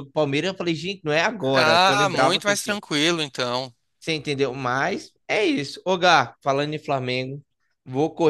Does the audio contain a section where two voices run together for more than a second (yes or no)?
yes